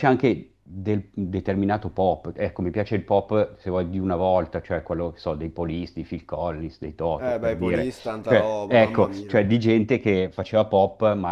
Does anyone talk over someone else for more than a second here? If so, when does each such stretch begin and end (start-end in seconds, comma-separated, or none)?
7.4-9.4